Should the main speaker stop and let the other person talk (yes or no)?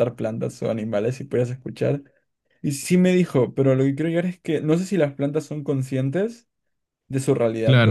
yes